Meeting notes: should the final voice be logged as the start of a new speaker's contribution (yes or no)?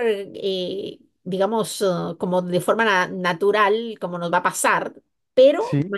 no